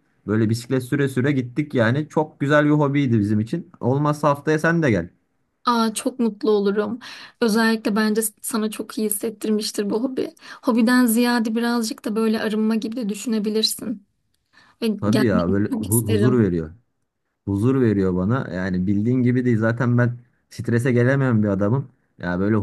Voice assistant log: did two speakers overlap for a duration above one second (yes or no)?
yes